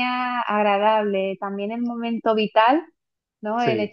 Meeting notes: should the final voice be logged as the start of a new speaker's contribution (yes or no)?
no